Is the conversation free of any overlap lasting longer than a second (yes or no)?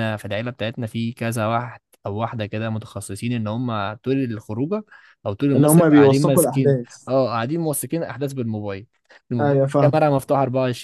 no